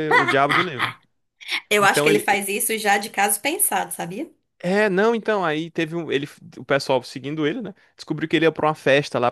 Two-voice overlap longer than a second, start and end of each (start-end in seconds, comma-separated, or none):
none